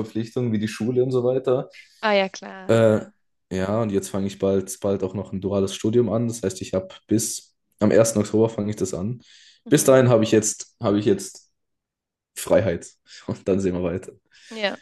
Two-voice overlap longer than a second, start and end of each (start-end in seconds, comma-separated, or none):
none